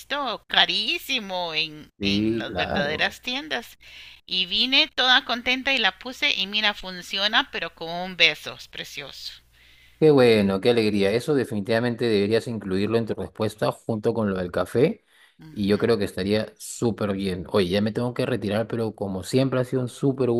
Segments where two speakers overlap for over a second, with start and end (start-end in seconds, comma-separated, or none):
2.0-3.2